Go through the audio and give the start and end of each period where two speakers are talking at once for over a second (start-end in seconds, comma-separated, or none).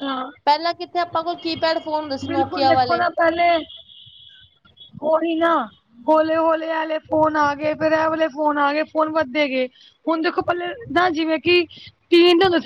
none